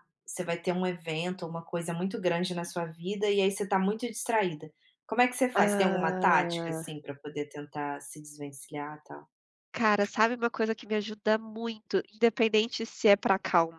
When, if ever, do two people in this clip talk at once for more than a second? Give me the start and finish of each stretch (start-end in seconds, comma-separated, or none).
5.5-6.9